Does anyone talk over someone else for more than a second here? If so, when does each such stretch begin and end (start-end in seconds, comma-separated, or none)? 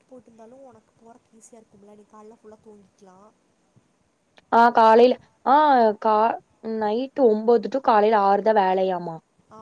none